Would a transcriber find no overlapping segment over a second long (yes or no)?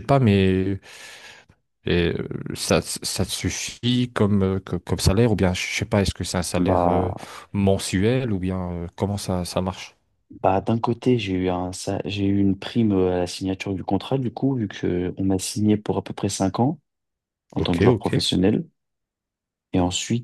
yes